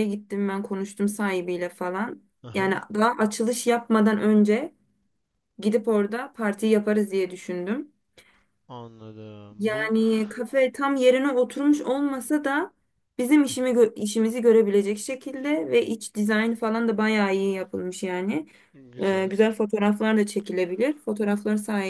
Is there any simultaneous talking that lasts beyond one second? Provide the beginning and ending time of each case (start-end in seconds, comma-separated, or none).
none